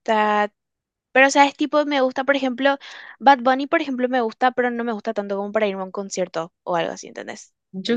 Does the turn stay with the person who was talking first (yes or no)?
no